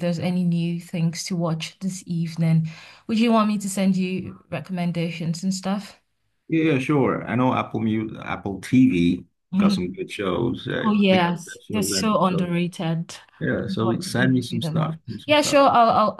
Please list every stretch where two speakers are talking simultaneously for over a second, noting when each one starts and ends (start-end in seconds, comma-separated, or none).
10.8-12.5, 13.4-15.6